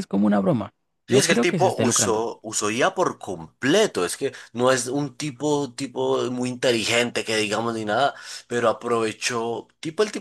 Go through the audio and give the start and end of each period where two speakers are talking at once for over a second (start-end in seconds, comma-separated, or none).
1.1-2.3